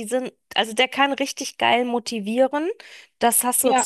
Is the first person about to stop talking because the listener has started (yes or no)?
no